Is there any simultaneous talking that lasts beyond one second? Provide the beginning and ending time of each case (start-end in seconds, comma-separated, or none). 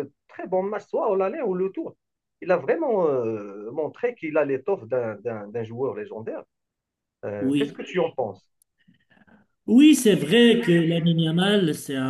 none